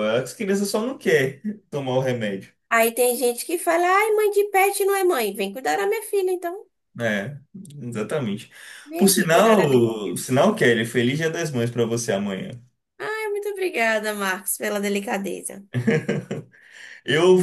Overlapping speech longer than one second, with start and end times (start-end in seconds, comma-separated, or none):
9.0-10.2